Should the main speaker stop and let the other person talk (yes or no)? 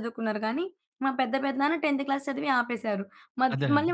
no